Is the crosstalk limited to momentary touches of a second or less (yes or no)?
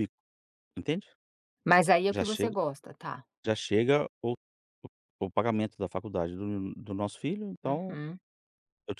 yes